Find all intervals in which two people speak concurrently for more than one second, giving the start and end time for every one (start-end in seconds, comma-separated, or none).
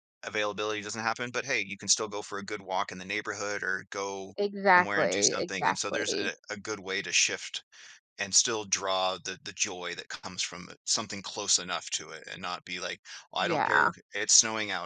4.7-6.3